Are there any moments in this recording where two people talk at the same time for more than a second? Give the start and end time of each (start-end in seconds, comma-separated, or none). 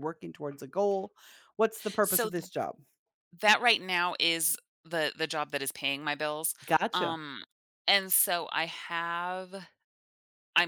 none